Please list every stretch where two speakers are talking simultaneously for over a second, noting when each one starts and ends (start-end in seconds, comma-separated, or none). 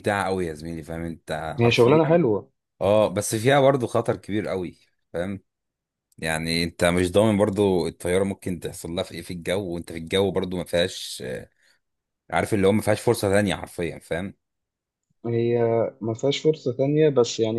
none